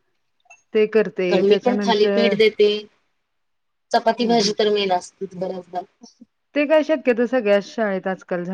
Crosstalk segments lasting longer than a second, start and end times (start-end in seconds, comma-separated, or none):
none